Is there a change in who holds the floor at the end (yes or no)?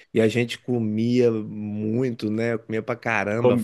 no